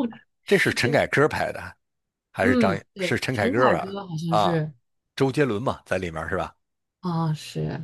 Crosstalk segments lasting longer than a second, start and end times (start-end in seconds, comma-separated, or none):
2.4-4.6